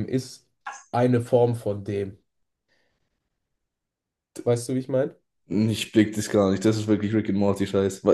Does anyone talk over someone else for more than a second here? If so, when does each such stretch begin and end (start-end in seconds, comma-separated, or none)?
none